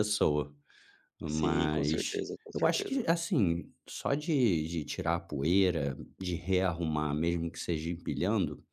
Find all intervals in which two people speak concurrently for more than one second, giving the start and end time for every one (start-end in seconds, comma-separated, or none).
1.3-3.0